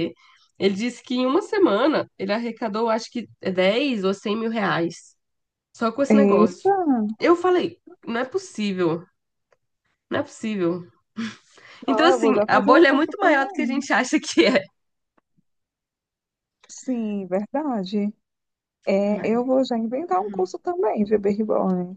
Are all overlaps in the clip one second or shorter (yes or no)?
no